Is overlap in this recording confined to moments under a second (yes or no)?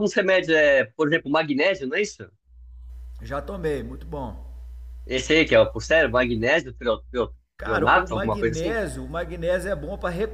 no